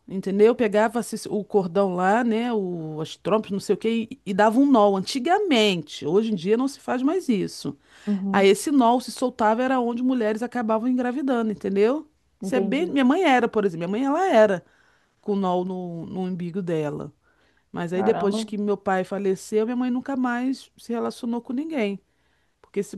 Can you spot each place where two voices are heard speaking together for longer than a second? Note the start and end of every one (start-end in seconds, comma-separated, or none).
none